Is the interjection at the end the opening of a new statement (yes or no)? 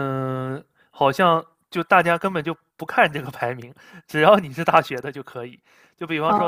no